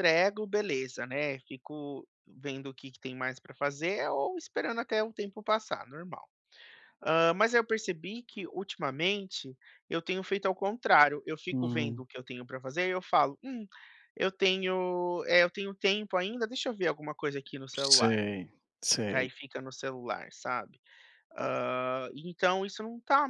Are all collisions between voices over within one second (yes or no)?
yes